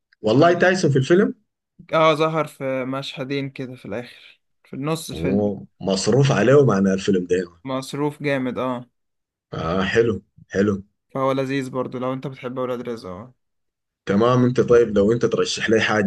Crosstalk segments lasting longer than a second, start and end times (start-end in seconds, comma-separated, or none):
none